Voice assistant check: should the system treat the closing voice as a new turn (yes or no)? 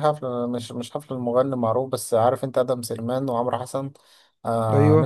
no